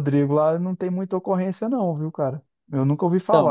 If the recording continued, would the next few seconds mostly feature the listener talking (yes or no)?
no